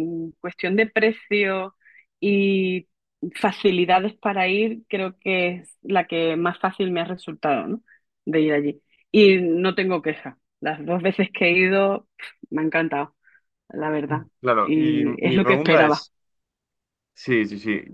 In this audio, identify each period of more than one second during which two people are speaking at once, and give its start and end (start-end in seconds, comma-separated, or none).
14.6-16.1